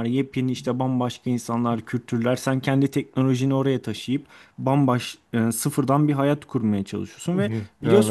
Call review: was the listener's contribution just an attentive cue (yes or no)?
yes